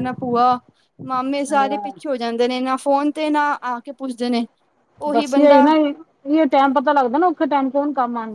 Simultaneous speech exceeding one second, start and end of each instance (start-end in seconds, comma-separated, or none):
none